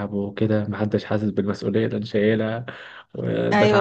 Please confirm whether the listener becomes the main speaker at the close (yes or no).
no